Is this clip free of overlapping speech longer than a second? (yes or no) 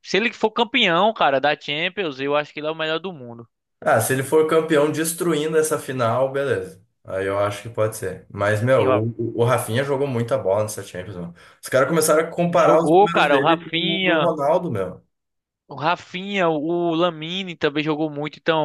no